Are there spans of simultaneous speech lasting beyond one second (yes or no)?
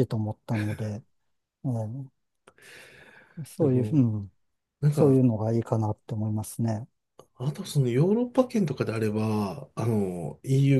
no